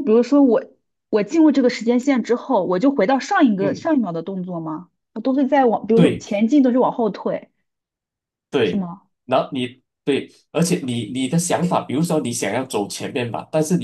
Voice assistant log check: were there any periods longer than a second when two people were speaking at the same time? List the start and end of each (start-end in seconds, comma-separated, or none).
none